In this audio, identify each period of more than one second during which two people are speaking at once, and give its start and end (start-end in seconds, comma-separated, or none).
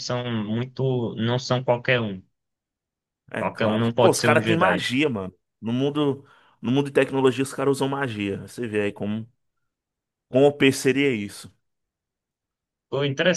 3.4-4.9